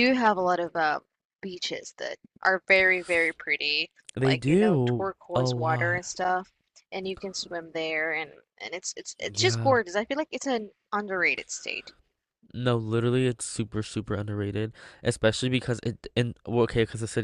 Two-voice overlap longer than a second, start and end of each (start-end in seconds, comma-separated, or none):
4.2-6.0